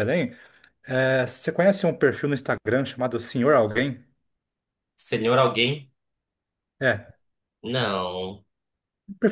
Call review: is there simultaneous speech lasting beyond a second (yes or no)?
no